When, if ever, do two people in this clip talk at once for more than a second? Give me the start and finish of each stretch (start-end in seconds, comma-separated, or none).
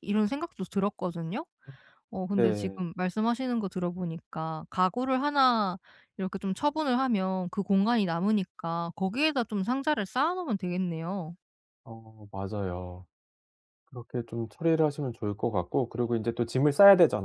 none